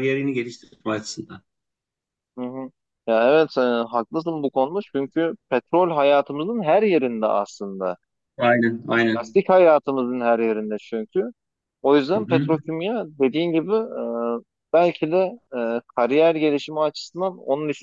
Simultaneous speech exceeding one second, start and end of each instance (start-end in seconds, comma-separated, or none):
none